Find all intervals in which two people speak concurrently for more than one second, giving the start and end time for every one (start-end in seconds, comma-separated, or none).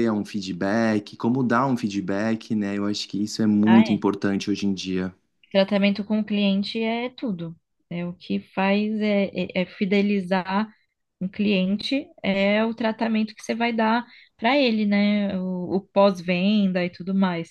none